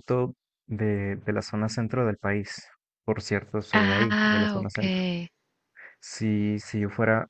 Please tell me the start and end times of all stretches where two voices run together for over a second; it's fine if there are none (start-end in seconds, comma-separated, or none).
3.7-5.0